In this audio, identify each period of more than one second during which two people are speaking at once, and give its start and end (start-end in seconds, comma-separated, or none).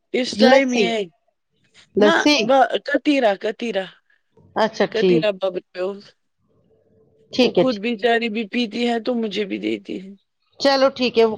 none